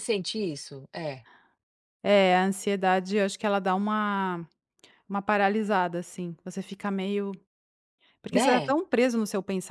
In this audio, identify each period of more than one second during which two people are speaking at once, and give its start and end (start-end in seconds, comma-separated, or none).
none